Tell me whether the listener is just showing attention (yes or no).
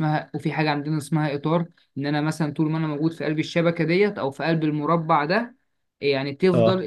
yes